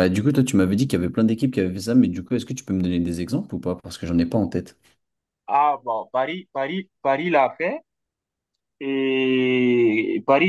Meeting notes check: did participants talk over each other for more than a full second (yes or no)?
no